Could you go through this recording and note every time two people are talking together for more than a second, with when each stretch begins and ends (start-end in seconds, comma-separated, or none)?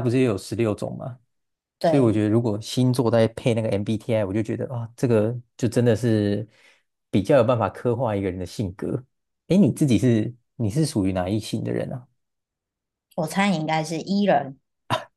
none